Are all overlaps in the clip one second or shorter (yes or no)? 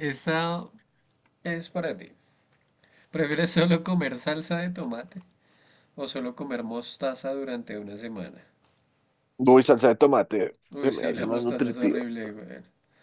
no